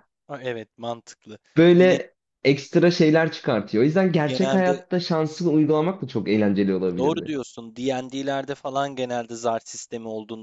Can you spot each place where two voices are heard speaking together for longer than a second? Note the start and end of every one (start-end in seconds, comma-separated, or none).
none